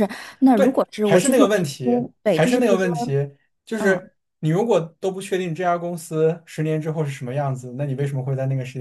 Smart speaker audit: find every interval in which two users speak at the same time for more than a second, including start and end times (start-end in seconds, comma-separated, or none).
0.5-2.9